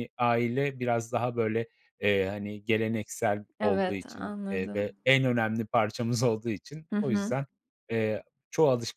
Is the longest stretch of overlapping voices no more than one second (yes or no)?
no